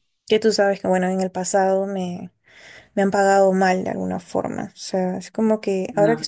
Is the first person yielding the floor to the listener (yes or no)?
no